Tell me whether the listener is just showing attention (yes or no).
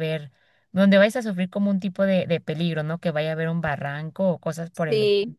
no